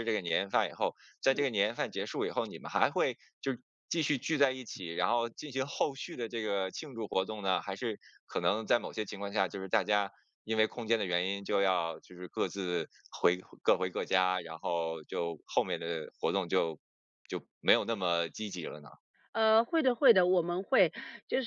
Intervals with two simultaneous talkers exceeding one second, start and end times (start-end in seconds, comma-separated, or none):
none